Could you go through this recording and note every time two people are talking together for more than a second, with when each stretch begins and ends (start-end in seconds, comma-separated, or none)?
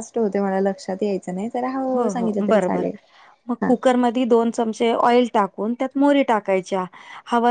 none